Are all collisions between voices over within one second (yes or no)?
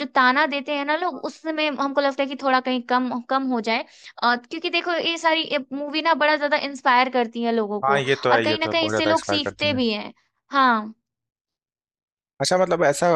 no